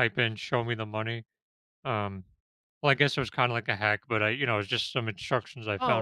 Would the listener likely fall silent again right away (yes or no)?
no